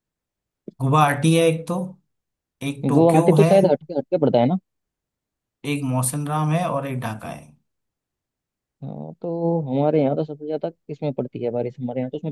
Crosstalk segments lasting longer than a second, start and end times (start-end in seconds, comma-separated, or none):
none